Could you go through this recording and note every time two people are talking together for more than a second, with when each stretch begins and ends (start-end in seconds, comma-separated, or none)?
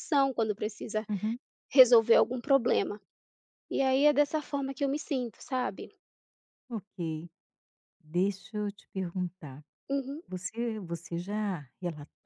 none